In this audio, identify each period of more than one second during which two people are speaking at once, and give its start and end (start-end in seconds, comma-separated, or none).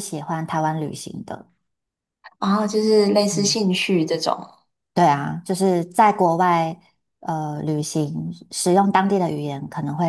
none